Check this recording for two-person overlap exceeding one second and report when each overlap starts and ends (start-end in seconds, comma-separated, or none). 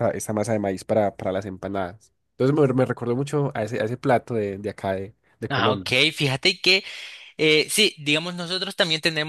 none